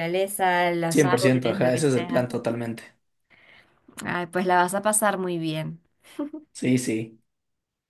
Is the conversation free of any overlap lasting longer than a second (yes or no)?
no